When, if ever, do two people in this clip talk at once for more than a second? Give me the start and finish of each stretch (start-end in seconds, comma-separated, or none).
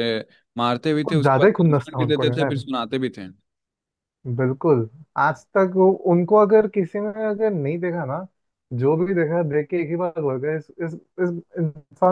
1.1-2.6